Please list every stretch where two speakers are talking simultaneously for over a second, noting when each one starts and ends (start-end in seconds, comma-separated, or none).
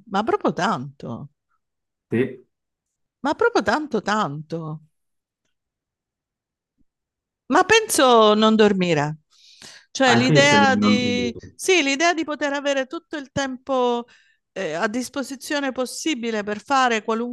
10.1-11.4